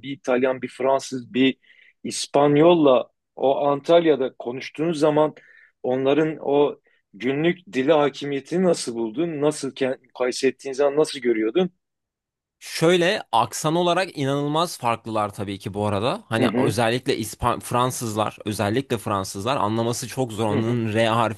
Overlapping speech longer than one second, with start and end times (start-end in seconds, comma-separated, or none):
none